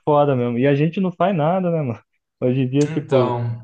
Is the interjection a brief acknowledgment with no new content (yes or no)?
yes